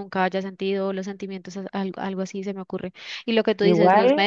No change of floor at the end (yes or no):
yes